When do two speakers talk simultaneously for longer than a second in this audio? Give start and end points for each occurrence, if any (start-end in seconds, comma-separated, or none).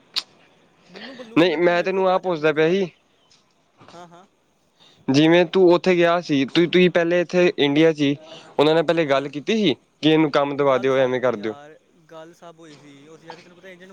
1.4-2.9